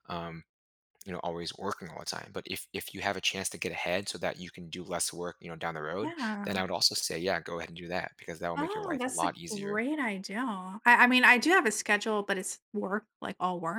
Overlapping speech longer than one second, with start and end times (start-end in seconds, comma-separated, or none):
8.6-9.9